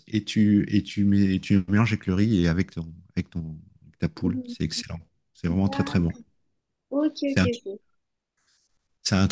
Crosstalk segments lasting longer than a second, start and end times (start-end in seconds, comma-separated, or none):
none